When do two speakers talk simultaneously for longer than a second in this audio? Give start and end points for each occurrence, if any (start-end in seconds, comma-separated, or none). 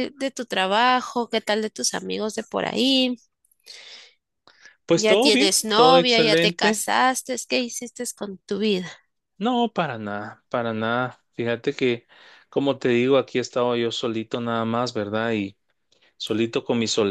4.9-6.8